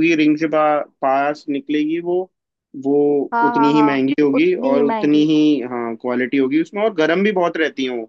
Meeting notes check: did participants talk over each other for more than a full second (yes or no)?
yes